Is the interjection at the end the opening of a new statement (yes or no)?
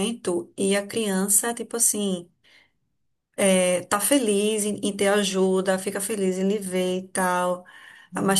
no